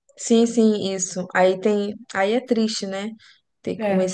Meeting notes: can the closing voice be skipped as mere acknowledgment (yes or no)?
yes